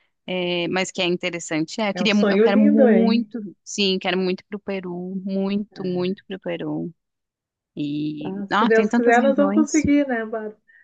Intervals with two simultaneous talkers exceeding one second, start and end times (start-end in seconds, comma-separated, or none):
1.9-3.3, 8.2-9.8